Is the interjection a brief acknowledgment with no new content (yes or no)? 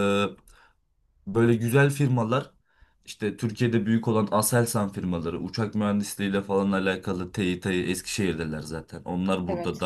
yes